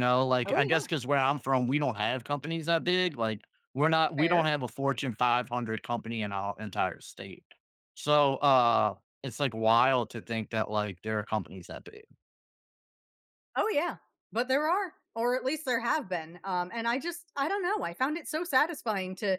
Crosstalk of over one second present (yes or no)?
no